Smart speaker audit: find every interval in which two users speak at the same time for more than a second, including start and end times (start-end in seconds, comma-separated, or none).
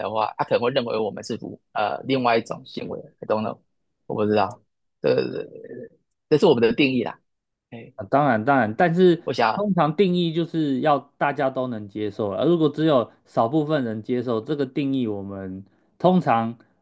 none